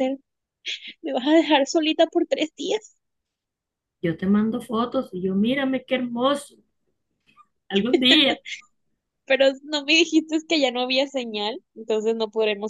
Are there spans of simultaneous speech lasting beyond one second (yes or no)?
no